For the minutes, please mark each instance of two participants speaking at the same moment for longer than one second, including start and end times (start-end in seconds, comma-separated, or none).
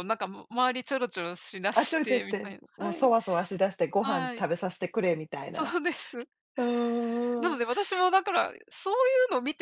1.7-3.1